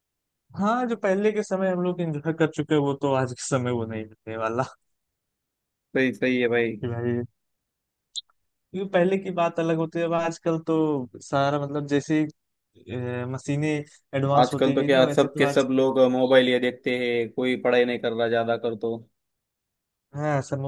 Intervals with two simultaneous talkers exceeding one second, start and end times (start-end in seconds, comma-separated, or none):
14.4-15.7